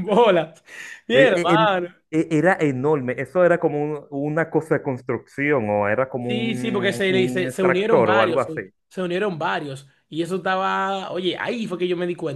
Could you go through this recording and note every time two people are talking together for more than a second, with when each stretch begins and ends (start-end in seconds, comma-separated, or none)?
6.2-8.6